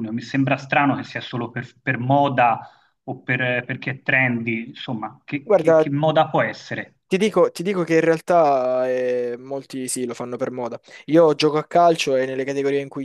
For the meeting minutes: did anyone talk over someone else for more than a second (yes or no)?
no